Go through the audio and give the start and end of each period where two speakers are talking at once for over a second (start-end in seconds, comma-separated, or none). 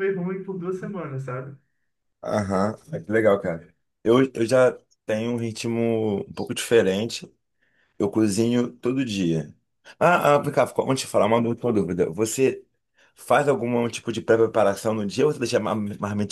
none